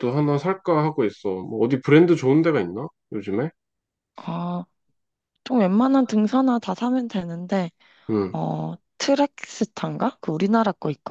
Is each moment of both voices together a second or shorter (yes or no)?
yes